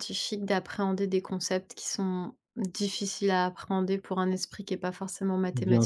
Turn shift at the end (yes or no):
yes